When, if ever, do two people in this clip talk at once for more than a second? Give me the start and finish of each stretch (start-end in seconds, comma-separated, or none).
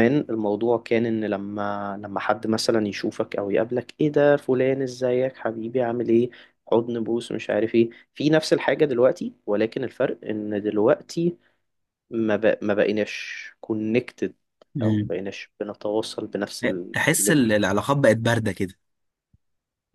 none